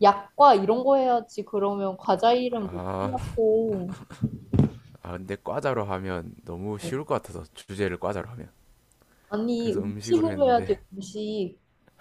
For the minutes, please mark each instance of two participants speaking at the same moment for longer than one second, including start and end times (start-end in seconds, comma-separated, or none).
9.6-10.8